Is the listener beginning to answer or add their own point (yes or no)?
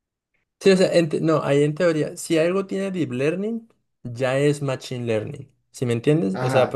yes